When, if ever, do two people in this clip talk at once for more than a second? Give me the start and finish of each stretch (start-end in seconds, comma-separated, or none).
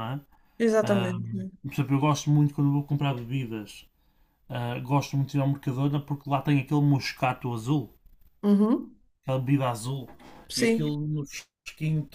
none